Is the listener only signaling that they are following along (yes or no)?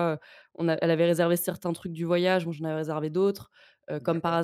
yes